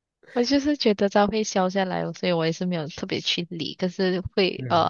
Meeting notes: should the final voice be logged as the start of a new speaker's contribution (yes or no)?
no